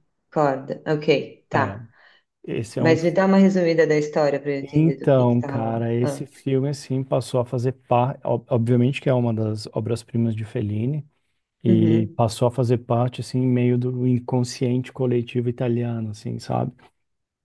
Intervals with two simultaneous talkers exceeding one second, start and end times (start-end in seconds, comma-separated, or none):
4.7-6.3